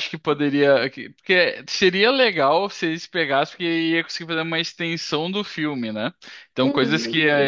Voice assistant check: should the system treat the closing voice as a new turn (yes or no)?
no